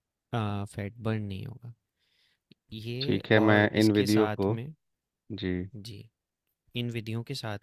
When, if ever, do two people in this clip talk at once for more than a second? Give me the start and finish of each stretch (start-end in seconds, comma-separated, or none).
3.0-4.5